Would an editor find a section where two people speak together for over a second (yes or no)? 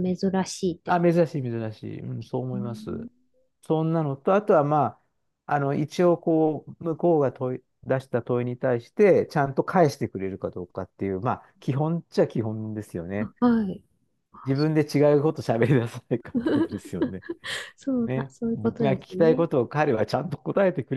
yes